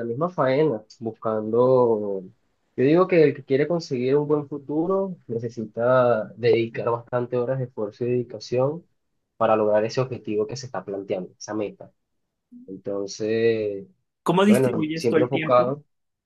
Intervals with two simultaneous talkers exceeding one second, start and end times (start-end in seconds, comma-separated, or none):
14.4-15.8